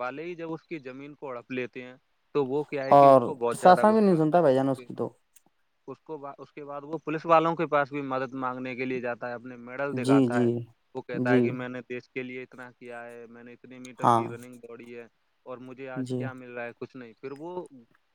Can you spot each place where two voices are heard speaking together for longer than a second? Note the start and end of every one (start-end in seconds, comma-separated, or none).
3.0-4.9